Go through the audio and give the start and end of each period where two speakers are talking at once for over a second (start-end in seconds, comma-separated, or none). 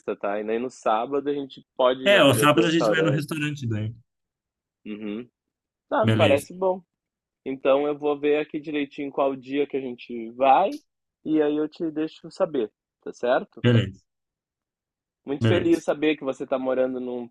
2.0-3.3